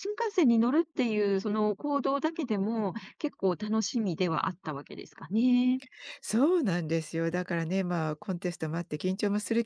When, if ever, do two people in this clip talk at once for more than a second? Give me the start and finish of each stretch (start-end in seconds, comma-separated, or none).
none